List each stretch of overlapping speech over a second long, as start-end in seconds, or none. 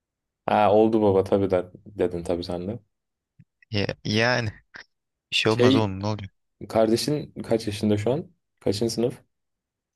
none